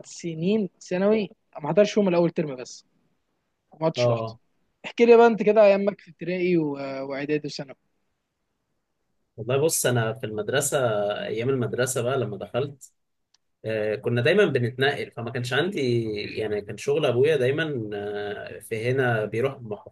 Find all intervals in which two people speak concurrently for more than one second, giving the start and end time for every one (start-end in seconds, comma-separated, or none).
none